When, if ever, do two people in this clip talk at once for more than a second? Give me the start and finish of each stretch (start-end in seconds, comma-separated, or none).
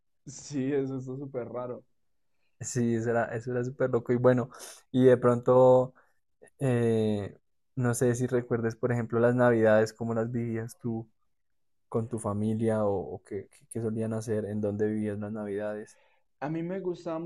none